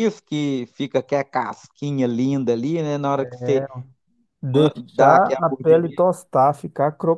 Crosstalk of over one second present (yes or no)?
yes